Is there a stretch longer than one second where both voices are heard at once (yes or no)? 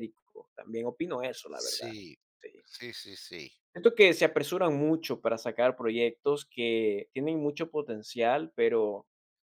no